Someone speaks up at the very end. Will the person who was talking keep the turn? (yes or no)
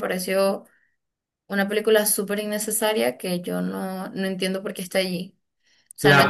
no